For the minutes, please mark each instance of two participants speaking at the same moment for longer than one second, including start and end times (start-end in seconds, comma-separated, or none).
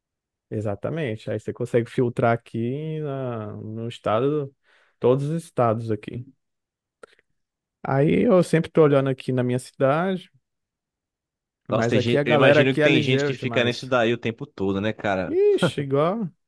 11.7-13.9